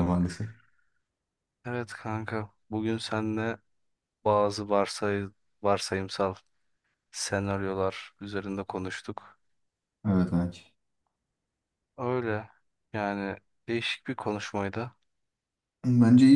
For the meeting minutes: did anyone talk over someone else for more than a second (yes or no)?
no